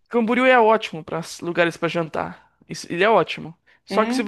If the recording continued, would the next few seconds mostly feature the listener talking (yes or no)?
no